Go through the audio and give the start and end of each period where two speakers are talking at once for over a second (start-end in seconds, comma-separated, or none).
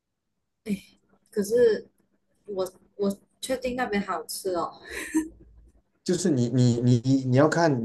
none